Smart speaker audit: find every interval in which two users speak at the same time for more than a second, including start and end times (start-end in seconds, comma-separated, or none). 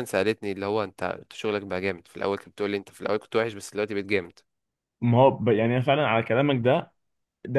none